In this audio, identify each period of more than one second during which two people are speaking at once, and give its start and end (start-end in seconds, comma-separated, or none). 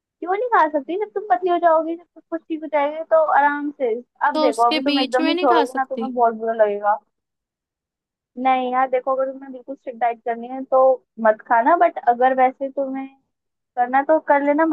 4.3-6.1